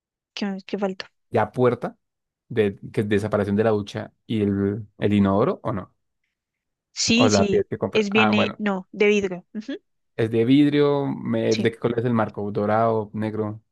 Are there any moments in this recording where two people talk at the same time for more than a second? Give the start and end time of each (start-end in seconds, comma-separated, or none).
7.2-8.6